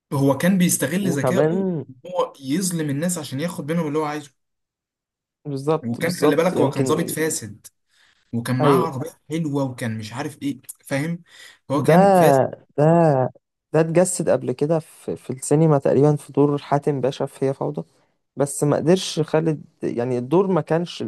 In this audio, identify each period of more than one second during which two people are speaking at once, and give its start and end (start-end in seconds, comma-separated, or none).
5.9-7.2